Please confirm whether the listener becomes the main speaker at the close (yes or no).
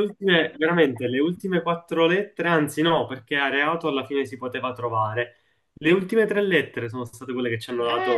yes